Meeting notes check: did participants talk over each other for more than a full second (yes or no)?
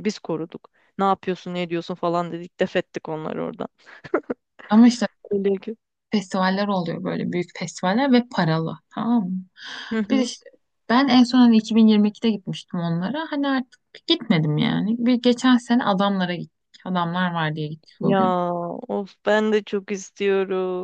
no